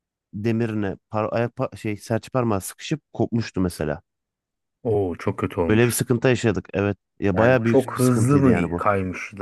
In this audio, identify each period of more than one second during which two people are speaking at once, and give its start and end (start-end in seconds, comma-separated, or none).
7.3-8.8